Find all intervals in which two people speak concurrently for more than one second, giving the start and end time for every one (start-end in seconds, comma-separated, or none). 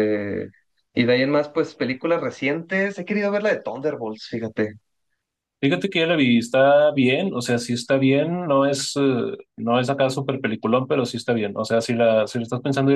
none